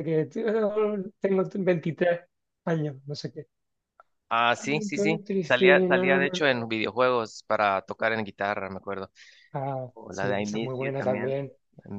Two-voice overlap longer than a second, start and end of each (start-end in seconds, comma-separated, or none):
4.6-6.4, 9.9-11.3